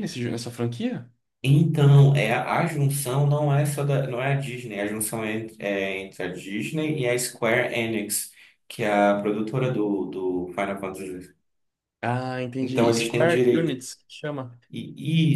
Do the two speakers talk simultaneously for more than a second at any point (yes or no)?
yes